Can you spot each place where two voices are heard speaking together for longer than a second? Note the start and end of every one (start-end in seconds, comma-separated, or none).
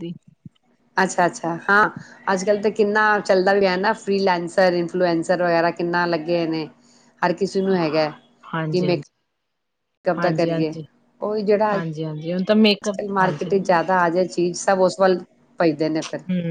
11.7-13.0